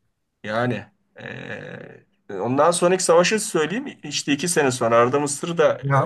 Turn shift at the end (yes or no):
yes